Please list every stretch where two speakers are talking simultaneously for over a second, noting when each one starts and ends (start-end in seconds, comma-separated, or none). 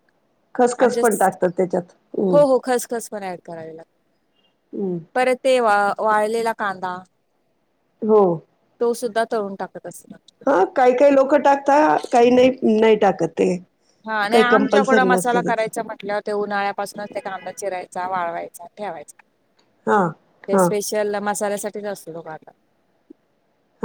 14.3-15.7